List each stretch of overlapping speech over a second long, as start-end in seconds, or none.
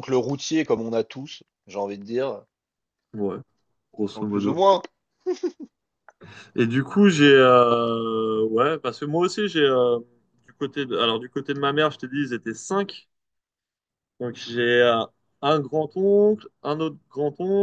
none